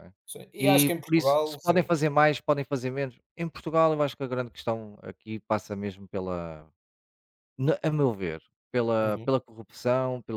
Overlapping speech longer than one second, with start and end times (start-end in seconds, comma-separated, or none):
0.6-1.9